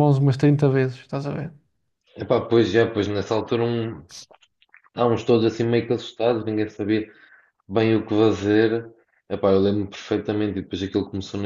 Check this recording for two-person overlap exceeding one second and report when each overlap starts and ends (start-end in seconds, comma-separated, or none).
none